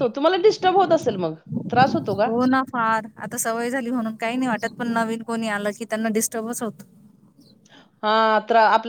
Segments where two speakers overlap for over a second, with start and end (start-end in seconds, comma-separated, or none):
none